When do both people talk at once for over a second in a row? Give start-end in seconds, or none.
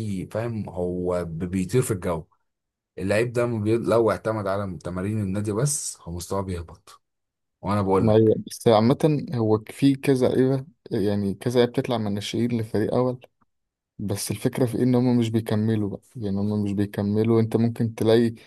none